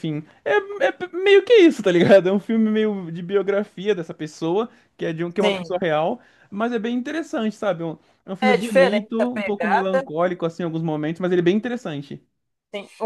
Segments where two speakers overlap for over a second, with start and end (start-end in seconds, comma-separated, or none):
8.4-10.1